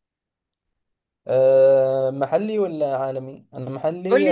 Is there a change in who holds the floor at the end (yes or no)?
yes